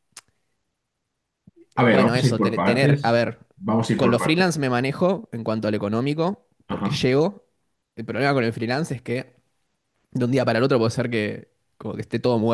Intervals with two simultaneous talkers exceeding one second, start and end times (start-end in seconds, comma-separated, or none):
1.9-3.2